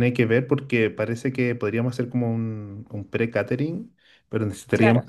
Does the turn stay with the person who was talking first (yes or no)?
yes